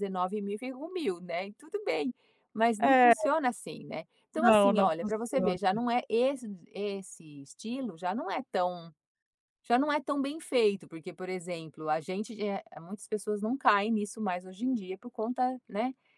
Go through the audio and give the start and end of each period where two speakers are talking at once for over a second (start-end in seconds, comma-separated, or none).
4.3-5.6